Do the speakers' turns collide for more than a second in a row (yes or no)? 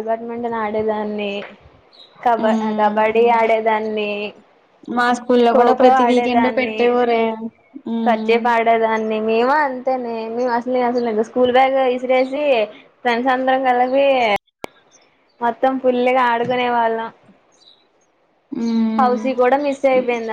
no